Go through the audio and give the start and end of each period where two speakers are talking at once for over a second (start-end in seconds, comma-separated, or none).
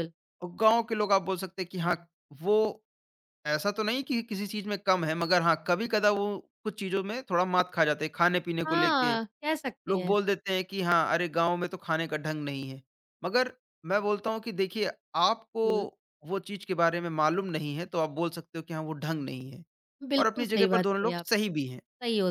20.2-21.8